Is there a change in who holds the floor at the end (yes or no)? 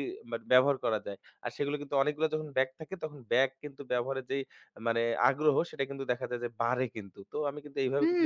yes